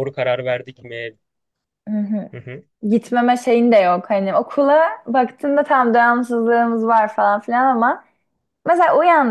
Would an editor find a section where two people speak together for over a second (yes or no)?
no